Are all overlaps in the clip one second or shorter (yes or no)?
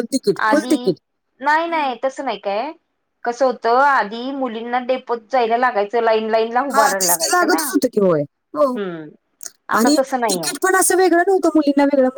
no